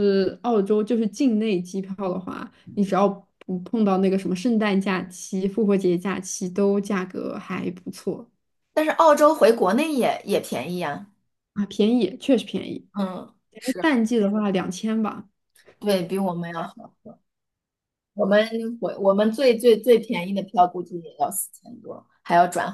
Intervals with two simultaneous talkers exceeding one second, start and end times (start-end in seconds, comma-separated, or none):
none